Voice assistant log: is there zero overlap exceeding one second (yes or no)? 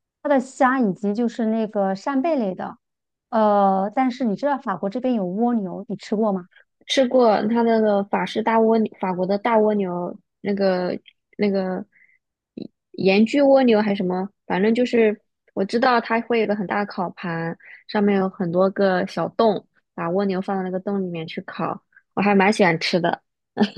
yes